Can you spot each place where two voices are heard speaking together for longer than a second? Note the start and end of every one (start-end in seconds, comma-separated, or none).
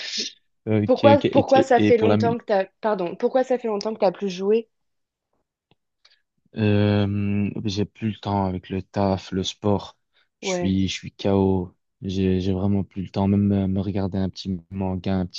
1.1-2.4